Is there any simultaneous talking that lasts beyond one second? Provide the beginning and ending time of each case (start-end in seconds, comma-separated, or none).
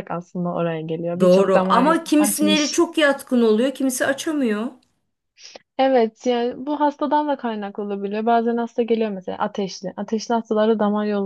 1.2-2.8